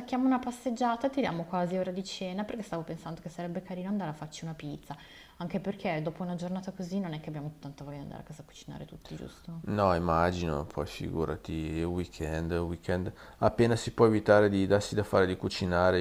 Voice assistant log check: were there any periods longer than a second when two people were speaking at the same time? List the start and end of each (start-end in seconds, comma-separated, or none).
none